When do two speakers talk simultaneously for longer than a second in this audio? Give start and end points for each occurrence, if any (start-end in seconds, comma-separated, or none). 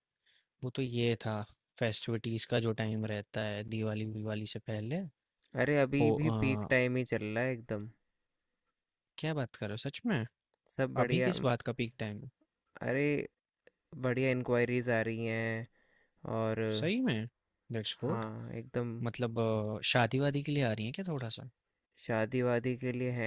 none